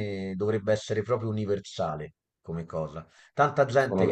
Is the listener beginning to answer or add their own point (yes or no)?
no